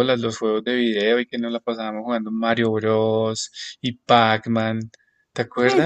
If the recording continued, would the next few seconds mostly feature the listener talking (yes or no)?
yes